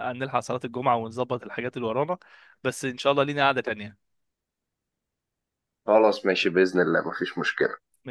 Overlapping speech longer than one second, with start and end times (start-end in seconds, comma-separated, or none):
none